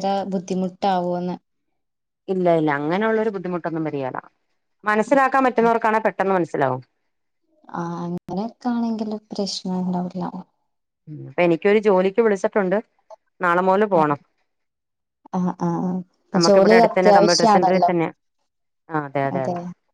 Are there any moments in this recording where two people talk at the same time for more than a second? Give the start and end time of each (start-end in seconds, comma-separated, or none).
16.5-17.9